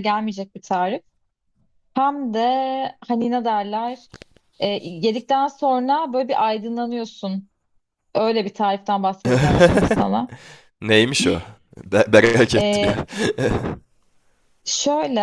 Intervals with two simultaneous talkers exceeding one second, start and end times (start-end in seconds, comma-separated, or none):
none